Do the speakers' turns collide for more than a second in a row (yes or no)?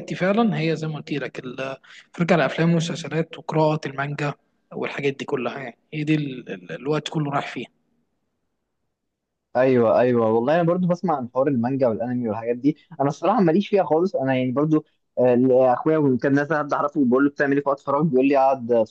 no